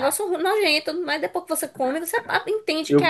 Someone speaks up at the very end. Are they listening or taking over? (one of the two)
taking over